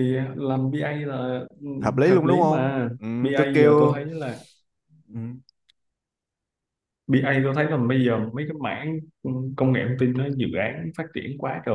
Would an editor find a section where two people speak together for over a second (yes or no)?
yes